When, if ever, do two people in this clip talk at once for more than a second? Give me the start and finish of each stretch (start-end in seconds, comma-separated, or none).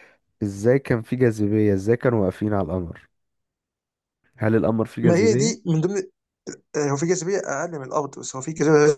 none